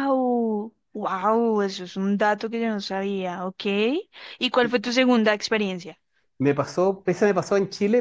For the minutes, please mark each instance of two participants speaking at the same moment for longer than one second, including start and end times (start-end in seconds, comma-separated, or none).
none